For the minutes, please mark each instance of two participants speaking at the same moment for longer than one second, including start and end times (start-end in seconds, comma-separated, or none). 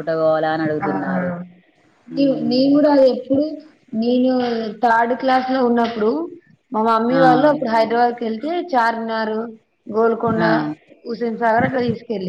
none